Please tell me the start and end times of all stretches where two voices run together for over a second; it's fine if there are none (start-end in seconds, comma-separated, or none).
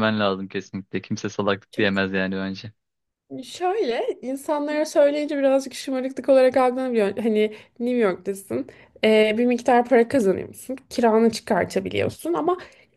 none